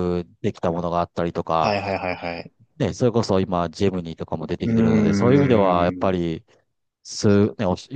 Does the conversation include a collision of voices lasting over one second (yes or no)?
yes